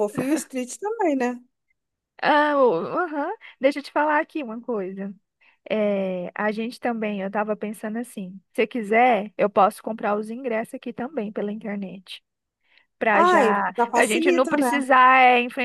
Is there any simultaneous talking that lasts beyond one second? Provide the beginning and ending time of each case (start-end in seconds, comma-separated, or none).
13.1-14.7